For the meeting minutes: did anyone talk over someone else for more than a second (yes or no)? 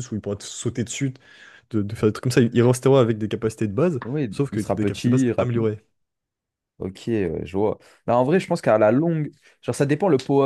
yes